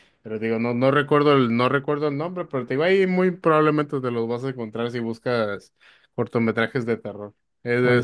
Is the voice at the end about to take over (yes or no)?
no